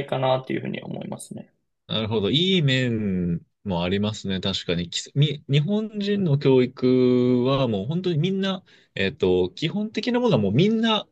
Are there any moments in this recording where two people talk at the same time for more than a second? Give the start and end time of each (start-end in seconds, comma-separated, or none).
none